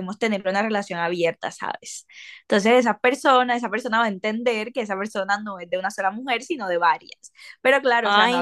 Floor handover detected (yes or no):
no